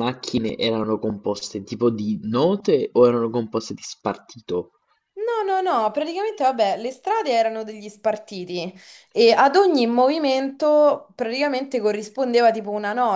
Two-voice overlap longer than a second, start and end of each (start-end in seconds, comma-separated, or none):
none